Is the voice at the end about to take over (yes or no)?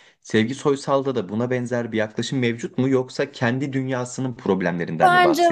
yes